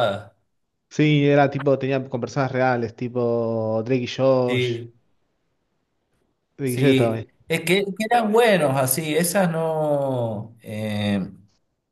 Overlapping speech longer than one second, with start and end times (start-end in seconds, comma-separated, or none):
none